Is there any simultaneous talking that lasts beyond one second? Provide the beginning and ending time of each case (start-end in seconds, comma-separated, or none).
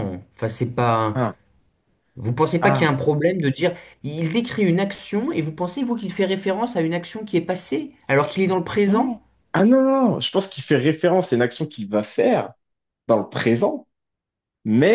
none